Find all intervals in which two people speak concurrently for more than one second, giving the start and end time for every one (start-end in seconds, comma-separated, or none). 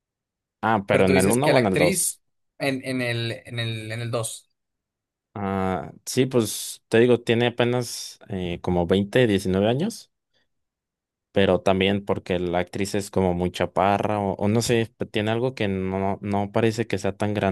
0.9-2.2